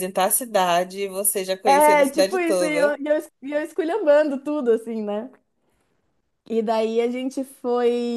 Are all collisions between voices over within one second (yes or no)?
no